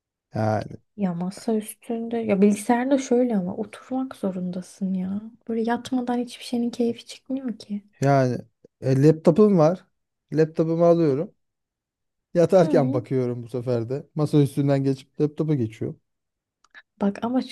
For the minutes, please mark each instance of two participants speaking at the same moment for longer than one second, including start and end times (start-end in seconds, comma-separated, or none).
none